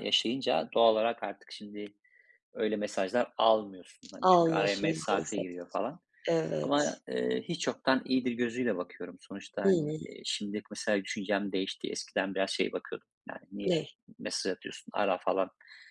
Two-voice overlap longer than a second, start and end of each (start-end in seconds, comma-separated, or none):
4.2-5.5